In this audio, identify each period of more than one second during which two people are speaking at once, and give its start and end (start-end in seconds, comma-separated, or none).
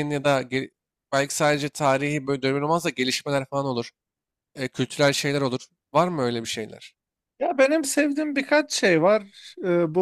none